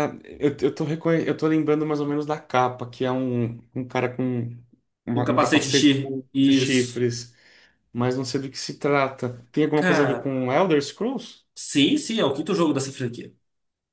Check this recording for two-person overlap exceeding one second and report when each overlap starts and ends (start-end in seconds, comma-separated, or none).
5.1-7.0